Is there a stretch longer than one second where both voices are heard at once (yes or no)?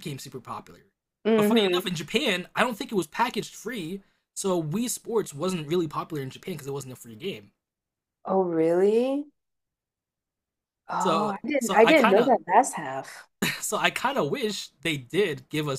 yes